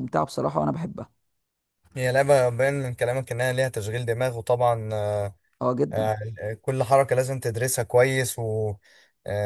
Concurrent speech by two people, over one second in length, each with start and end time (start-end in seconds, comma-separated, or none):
none